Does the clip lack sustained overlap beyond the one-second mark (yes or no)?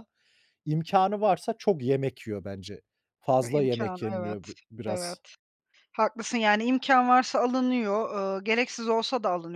no